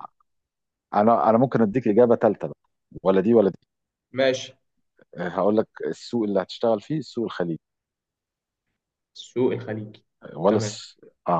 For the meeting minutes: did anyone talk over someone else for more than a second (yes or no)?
no